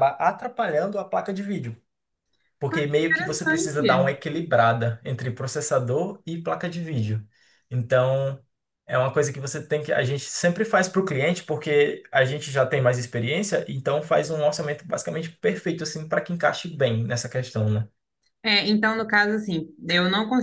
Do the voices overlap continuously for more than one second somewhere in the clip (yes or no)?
yes